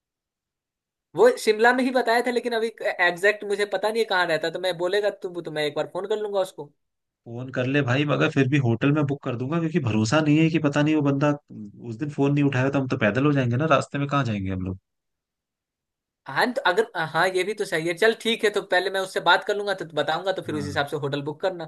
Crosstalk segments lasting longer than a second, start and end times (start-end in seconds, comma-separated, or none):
none